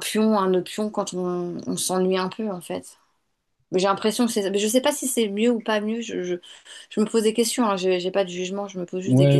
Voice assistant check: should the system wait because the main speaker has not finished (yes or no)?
no